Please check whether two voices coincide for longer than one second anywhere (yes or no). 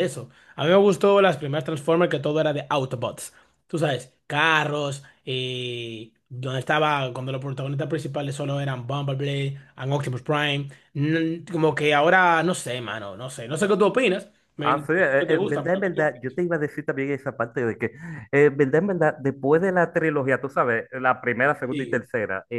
yes